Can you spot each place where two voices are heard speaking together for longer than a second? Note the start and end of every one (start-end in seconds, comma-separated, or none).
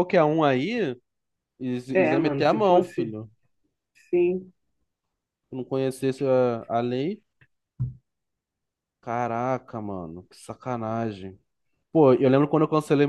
1.9-3.2